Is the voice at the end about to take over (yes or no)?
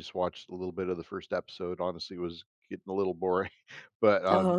no